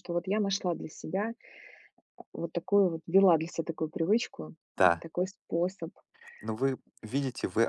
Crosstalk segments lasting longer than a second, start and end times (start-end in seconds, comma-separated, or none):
none